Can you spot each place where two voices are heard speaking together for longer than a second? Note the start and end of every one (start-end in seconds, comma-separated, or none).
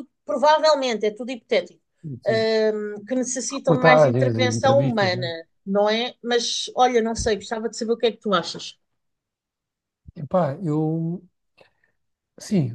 3.6-5.3